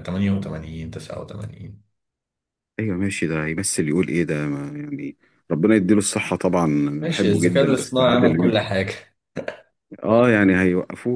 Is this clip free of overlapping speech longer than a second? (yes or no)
no